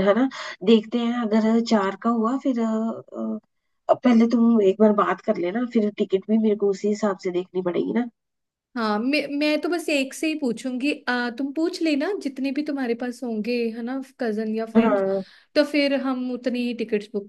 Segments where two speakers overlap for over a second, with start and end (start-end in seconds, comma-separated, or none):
none